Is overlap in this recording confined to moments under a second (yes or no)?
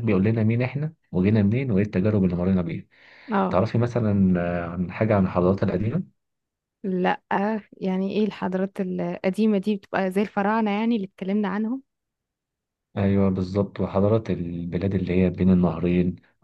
yes